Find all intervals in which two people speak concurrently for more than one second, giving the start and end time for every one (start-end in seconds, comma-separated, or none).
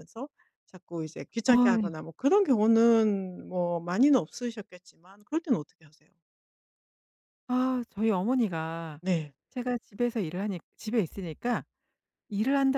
none